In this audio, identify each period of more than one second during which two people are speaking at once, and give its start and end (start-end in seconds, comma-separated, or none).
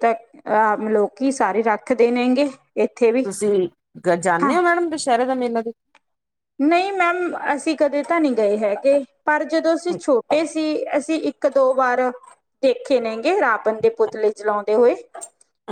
none